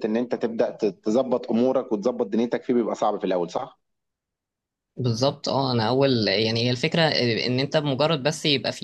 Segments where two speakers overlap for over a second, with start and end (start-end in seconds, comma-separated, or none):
none